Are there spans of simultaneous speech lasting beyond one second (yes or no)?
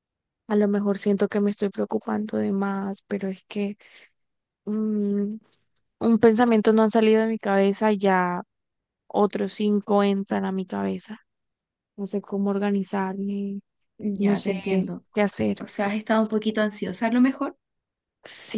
no